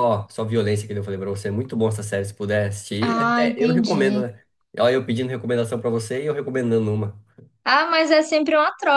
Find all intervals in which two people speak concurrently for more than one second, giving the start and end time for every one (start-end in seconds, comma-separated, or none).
3.0-4.2